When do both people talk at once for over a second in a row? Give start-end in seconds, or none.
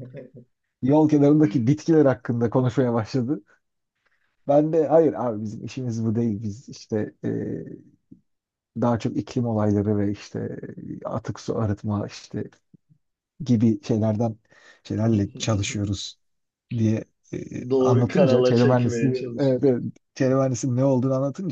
17.8-19.8